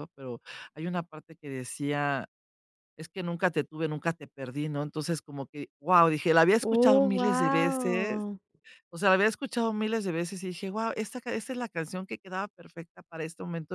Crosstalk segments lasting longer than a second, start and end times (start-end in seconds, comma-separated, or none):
6.6-8.2